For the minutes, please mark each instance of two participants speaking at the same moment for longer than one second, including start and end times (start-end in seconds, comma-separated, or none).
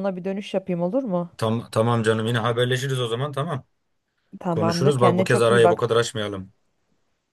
4.5-5.8